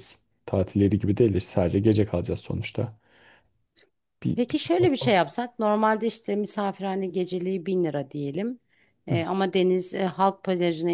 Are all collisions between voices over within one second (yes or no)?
yes